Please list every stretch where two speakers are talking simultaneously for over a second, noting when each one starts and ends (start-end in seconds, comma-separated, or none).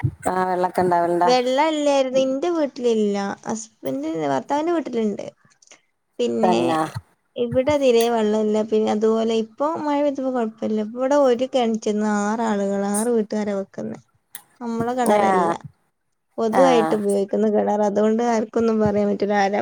none